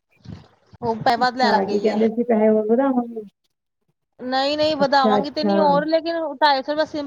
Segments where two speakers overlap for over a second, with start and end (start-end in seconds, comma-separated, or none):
none